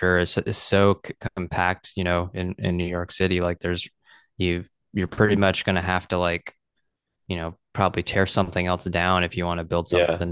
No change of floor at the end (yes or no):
no